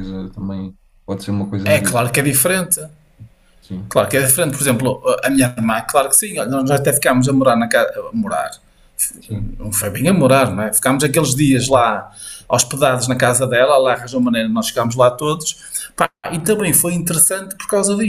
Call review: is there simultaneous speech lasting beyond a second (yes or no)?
no